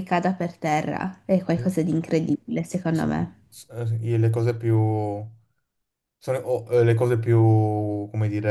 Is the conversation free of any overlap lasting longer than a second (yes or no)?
yes